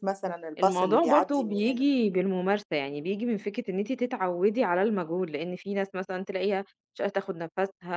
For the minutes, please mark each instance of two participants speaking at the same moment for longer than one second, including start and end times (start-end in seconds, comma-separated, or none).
0.6-1.9